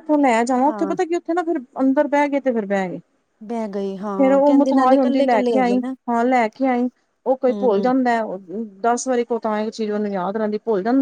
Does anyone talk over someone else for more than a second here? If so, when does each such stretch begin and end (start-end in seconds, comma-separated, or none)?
4.2-5.9